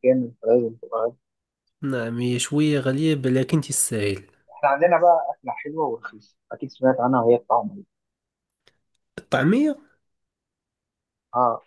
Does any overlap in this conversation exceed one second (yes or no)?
no